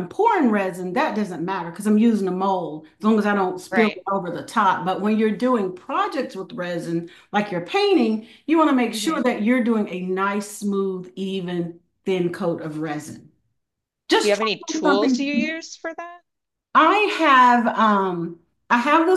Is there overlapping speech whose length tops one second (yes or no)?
yes